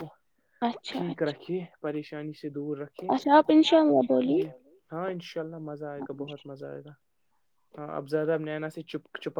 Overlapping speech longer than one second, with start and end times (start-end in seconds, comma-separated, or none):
3.1-4.4